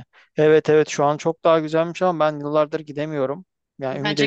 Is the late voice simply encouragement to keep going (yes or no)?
yes